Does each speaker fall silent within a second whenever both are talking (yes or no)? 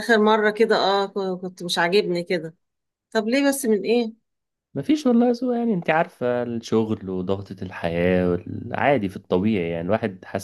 yes